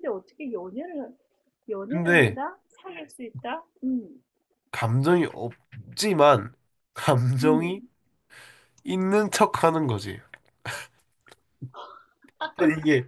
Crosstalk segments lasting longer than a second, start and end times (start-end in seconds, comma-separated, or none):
none